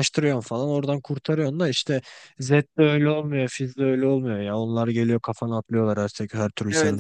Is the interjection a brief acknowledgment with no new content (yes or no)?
no